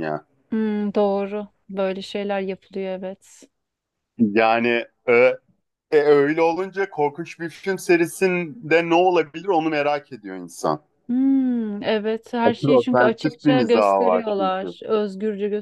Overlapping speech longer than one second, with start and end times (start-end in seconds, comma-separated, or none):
12.4-14.8